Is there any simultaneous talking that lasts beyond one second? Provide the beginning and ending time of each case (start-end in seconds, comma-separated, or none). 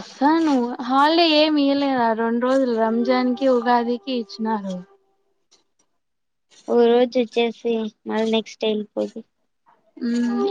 none